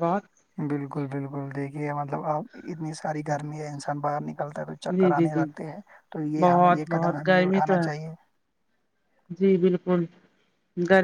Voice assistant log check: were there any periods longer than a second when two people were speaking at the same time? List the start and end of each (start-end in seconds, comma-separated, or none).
6.4-8.0